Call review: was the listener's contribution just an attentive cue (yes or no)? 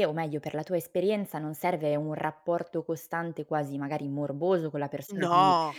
yes